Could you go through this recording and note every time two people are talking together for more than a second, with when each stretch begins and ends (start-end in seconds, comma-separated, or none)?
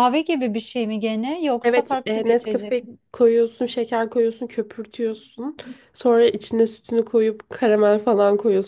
1.6-2.9